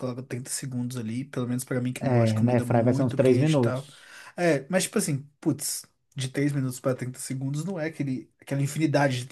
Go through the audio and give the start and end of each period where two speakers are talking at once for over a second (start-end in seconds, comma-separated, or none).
2.0-3.9